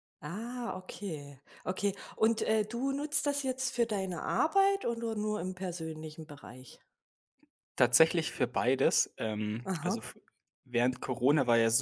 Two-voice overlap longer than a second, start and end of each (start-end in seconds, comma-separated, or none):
none